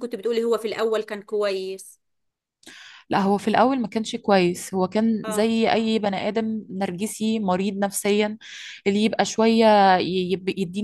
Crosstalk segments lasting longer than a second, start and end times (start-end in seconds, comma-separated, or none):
none